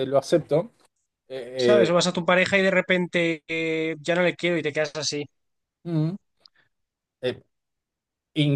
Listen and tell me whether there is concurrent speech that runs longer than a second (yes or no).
no